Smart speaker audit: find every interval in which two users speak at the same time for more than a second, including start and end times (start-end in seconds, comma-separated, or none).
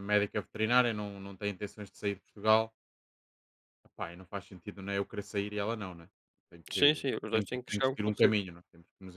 6.7-8.4